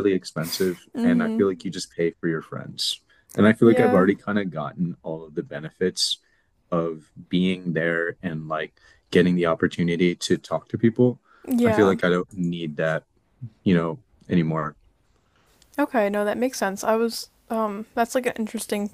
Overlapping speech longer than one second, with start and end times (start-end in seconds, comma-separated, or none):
none